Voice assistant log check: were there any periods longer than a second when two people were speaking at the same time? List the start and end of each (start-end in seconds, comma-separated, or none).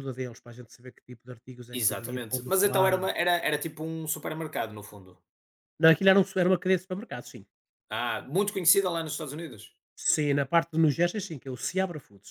1.7-3.1